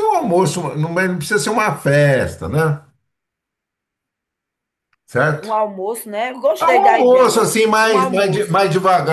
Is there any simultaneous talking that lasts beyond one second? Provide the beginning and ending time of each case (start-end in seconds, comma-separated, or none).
6.6-8.5